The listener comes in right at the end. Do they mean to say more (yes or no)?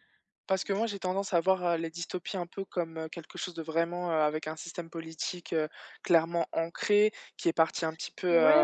yes